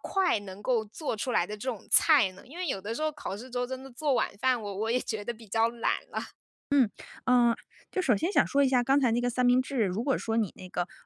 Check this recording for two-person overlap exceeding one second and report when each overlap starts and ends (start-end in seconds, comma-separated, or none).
none